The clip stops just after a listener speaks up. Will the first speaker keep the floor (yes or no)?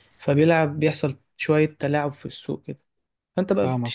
yes